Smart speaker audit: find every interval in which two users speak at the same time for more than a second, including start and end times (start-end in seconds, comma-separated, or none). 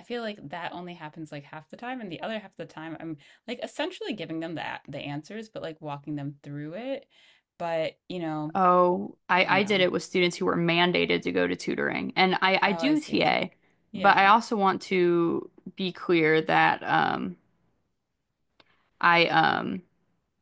none